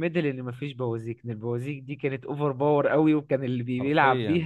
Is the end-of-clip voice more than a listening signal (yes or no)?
no